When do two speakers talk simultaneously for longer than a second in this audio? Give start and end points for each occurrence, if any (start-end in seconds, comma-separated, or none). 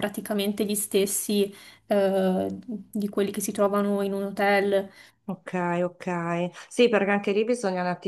none